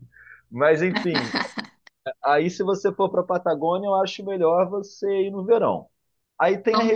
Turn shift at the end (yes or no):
no